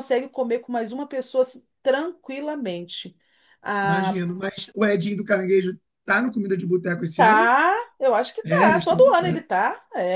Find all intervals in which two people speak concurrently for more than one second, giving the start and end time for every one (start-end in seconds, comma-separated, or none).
none